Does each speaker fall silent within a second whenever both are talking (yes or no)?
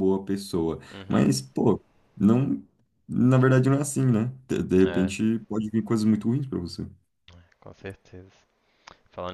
yes